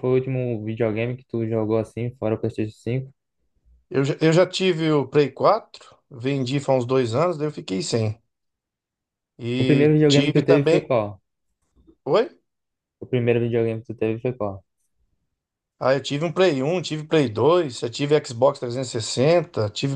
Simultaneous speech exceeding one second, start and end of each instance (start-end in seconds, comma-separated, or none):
9.6-10.9